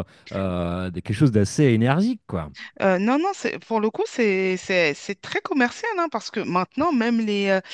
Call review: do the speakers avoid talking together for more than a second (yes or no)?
yes